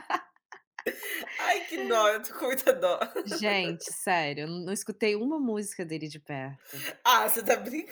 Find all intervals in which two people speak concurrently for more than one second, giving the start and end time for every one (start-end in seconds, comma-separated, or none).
none